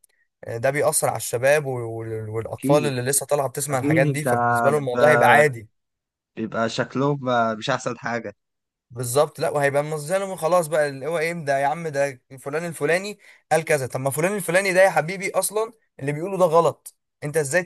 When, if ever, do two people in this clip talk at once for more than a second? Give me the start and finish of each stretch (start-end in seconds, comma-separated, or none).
none